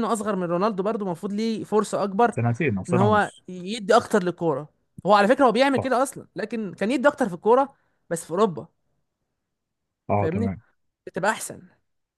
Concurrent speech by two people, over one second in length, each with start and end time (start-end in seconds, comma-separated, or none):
none